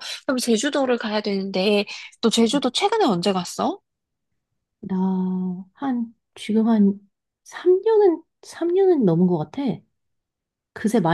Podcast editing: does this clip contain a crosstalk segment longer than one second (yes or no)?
no